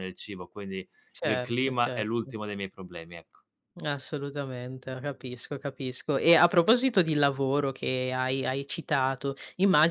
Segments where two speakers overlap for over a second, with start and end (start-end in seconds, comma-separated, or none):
1.1-2.4